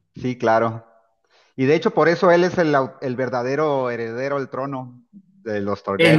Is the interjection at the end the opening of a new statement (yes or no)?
yes